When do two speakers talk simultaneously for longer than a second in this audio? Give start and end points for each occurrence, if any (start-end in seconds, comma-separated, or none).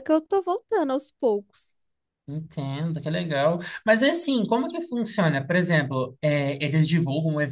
none